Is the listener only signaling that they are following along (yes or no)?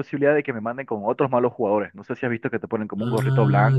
no